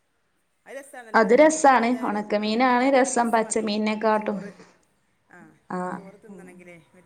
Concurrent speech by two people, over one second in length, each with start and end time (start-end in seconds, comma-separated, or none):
1.2-4.4